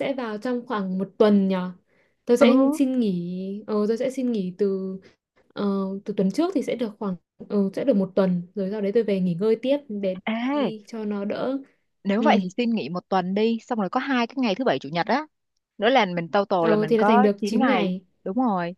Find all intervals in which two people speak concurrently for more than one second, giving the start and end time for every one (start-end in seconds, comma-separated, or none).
16.6-18.1